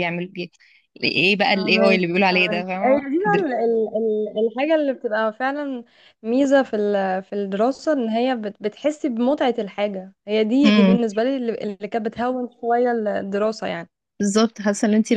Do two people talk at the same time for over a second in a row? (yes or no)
yes